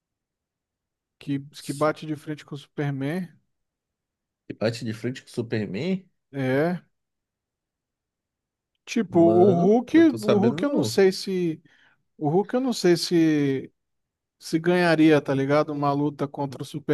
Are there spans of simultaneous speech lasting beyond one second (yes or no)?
yes